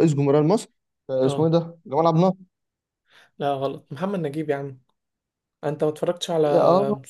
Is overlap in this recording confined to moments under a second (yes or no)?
yes